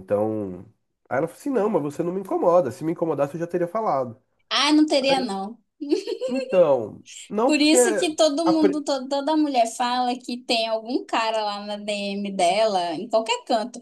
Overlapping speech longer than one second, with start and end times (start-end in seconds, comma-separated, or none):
none